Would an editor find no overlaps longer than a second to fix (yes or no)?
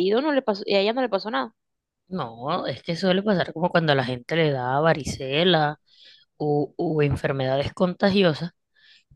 yes